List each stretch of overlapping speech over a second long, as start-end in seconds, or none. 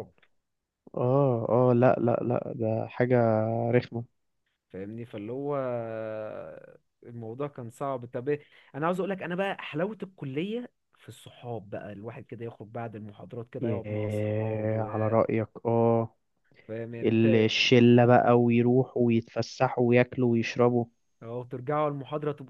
13.6-14.8